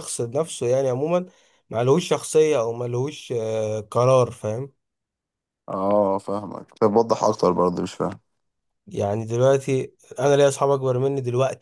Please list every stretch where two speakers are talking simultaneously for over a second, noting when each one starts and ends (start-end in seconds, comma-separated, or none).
none